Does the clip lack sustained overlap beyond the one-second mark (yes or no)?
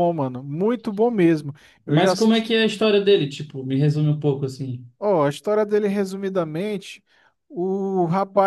yes